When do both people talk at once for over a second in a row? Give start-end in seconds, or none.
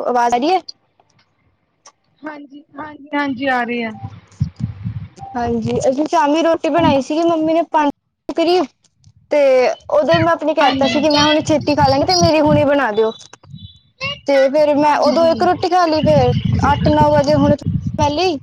none